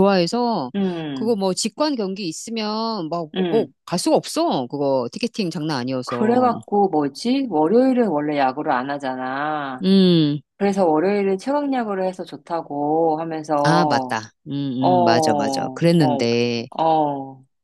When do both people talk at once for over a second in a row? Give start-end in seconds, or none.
15.0-16.2